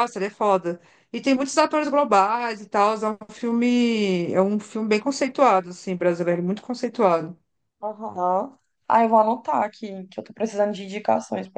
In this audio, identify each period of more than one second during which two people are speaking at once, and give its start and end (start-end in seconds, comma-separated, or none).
none